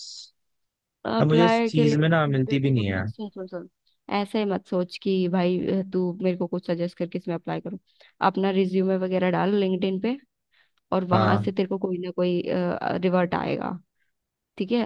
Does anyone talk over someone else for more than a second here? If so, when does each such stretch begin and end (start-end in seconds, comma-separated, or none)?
1.2-3.0